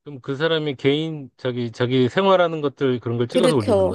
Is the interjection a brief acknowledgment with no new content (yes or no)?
no